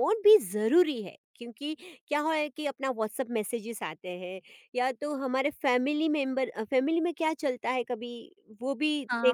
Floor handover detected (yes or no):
yes